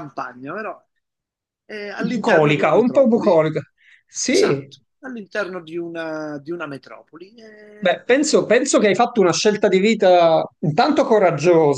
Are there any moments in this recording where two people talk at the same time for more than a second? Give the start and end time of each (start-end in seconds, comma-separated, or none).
2.0-3.4